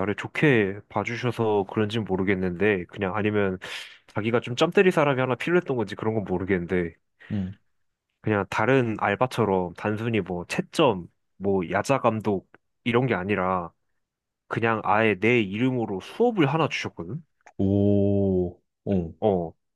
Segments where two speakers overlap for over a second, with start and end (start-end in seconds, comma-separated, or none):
none